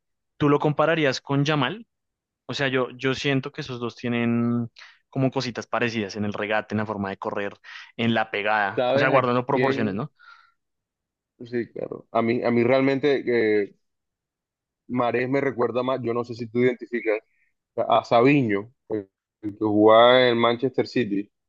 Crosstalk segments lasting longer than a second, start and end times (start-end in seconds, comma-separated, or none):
8.7-10.1